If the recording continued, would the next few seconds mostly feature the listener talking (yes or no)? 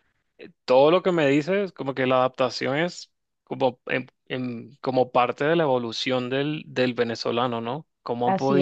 no